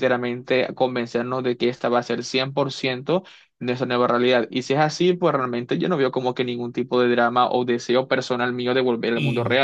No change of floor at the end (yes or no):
no